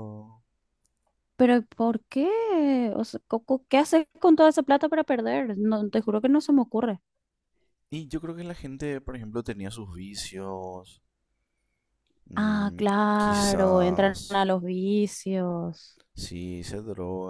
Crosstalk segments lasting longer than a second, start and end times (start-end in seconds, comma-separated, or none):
12.3-14.4